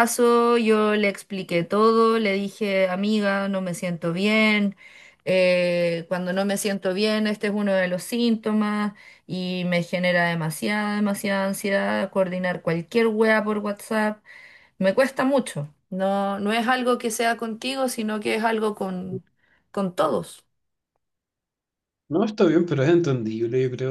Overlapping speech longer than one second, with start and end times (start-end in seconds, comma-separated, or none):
none